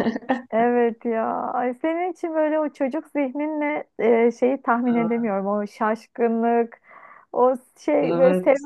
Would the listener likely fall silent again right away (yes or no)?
no